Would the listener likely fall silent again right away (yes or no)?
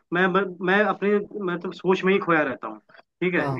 yes